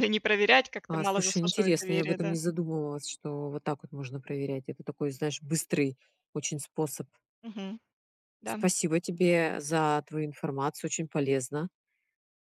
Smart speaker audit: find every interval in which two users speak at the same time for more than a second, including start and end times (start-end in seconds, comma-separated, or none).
0.9-2.4